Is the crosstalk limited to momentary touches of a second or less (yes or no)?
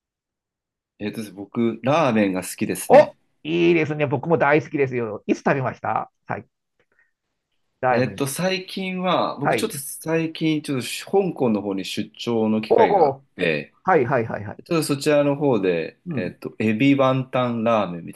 yes